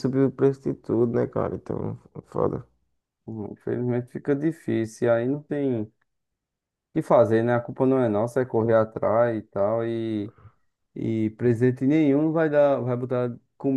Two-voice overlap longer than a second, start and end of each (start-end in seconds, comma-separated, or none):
none